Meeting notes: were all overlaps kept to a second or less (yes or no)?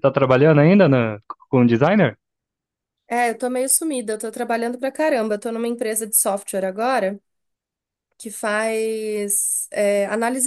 yes